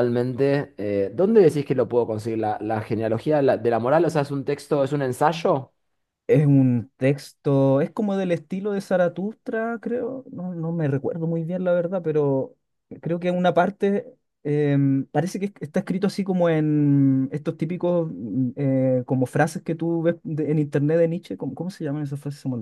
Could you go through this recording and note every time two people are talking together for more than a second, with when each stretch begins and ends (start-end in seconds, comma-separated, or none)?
none